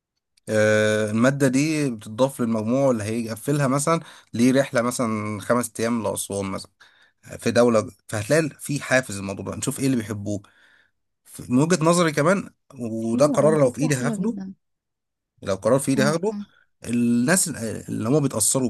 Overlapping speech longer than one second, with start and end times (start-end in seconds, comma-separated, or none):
13.0-14.4